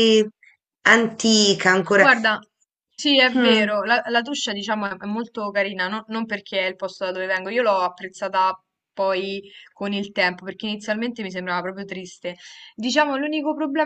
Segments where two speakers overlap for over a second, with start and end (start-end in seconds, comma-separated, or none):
none